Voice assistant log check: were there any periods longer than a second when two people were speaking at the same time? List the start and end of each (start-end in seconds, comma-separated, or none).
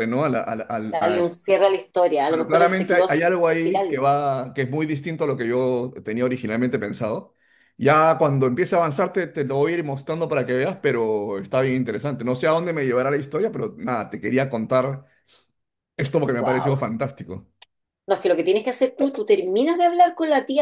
2.3-4.1